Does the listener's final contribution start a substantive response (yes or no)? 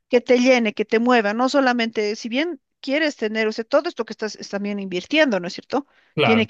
no